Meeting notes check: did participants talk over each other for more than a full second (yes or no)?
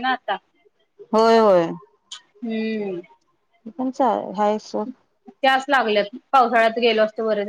no